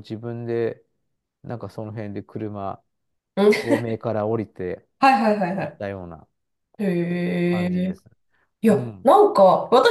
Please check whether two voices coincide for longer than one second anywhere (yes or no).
no